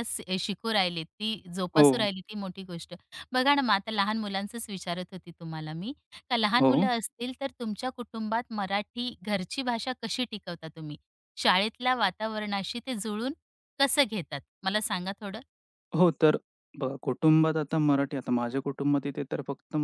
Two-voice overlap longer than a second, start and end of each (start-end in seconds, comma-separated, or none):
none